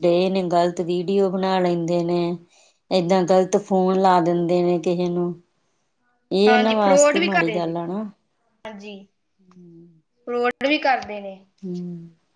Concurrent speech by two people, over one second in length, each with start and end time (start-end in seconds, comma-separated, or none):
6.5-7.8